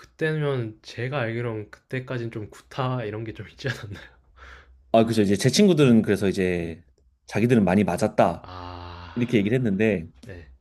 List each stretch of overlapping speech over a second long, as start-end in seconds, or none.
none